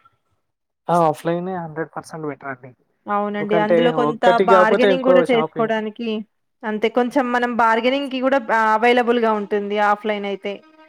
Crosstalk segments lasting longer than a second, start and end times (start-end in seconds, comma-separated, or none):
3.3-5.7